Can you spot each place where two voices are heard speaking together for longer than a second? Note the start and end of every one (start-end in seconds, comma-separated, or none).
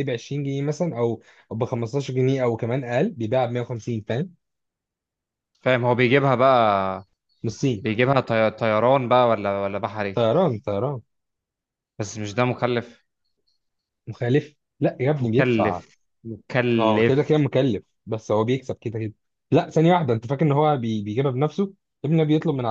none